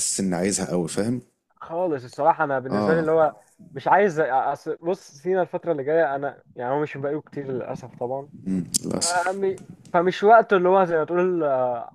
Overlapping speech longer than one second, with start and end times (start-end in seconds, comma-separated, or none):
none